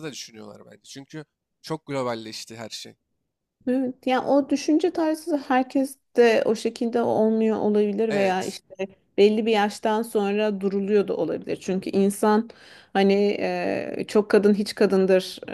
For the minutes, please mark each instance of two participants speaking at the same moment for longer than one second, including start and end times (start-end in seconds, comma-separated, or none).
none